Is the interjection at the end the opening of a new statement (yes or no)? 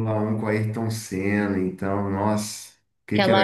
yes